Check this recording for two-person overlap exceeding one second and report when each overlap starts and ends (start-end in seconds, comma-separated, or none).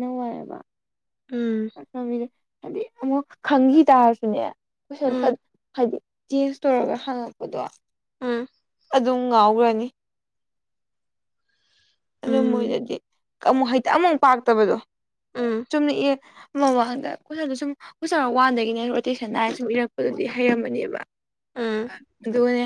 none